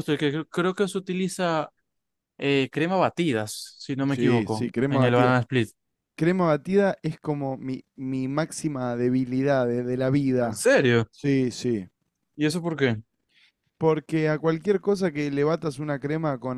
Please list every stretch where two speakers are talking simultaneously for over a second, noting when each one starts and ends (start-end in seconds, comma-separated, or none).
4.0-5.3